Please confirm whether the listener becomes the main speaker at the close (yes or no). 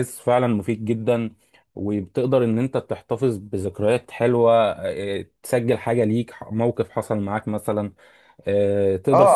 yes